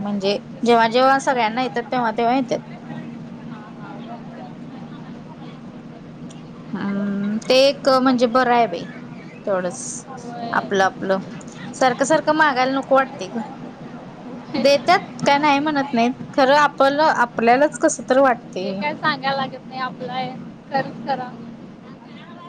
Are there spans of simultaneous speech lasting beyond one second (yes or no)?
no